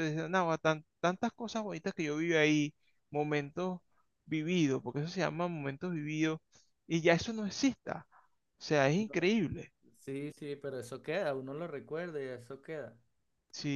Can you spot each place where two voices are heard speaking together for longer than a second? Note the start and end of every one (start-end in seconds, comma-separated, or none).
none